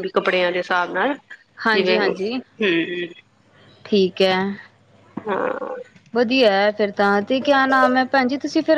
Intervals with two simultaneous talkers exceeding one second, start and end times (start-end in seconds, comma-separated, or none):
none